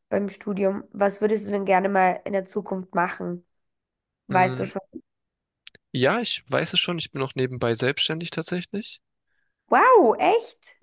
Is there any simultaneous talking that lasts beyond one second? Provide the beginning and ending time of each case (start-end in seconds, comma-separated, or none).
none